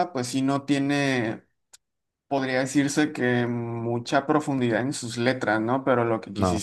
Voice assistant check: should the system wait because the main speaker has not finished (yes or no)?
yes